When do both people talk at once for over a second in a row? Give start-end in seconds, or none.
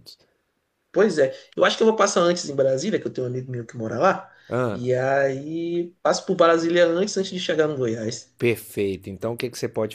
none